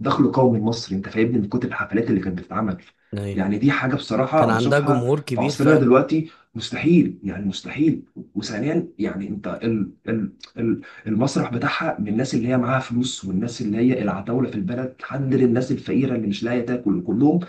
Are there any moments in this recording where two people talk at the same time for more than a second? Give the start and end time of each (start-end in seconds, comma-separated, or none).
4.3-5.9